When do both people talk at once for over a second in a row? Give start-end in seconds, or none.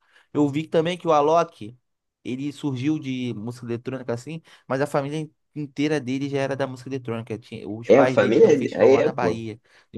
7.9-9.4